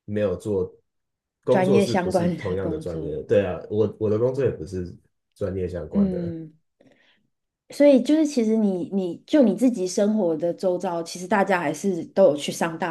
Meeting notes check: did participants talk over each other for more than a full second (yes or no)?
yes